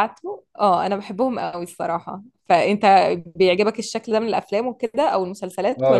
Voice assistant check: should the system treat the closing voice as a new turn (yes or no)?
yes